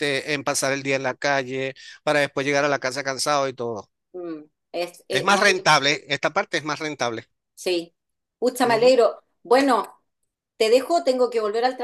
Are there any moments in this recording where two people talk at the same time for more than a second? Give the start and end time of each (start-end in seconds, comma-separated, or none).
none